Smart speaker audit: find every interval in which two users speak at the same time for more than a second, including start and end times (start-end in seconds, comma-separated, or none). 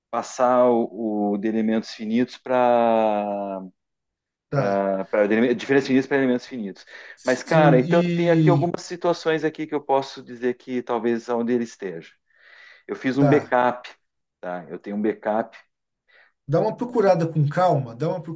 7.2-8.7